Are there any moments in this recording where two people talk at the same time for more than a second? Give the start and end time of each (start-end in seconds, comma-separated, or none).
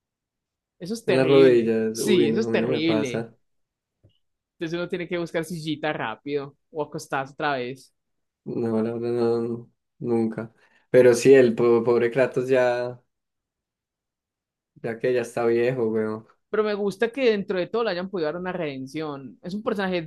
1.1-3.3